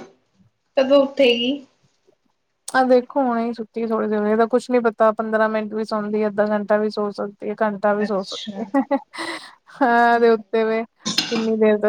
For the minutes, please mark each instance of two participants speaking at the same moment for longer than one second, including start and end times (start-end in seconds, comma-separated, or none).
none